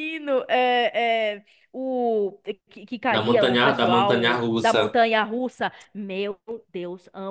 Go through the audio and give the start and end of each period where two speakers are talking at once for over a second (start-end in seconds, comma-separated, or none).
3.1-5.0